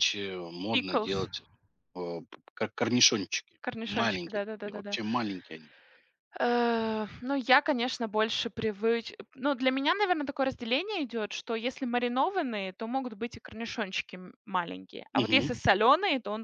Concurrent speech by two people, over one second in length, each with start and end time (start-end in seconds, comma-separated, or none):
3.6-5.0